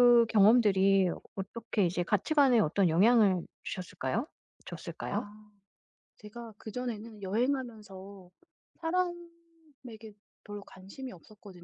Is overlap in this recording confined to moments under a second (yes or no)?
yes